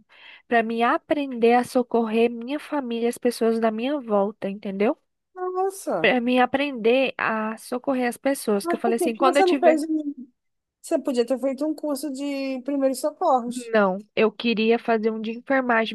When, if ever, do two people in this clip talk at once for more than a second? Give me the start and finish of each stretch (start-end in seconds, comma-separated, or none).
8.6-9.8